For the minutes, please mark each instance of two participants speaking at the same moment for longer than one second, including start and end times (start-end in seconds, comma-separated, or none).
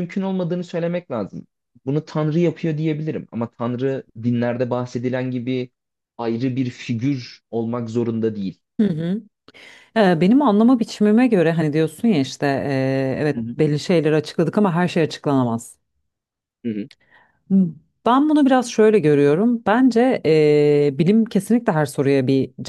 none